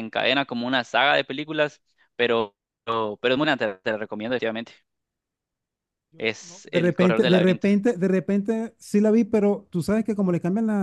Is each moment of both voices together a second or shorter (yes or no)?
no